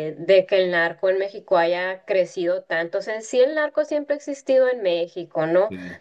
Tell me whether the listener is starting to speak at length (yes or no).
no